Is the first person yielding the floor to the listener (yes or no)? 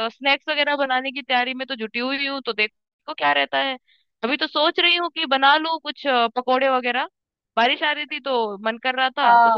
yes